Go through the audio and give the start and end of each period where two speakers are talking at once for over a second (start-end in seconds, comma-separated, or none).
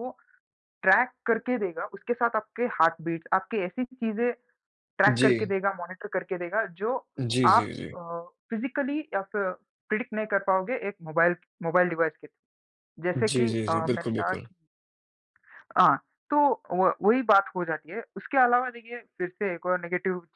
13.2-14.5